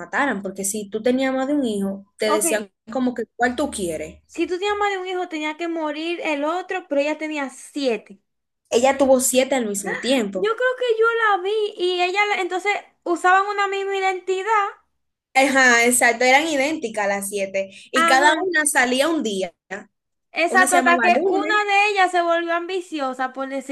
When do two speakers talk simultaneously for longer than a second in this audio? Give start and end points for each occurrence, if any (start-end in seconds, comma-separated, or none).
20.5-21.7